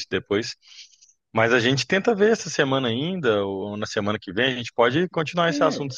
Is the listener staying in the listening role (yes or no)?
no